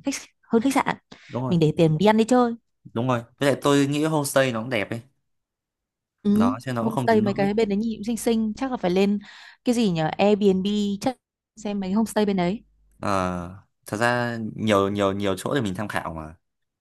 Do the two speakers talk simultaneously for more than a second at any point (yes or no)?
yes